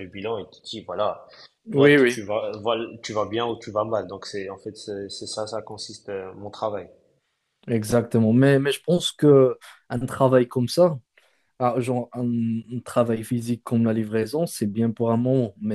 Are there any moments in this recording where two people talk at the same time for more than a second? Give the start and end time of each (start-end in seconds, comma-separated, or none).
none